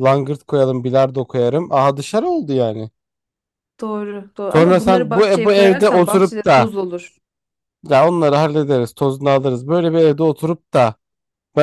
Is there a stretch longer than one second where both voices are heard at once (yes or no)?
yes